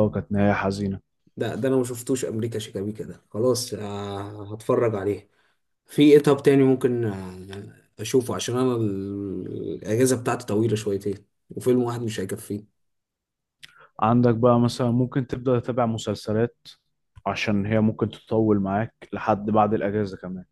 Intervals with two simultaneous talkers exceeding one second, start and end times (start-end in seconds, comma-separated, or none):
none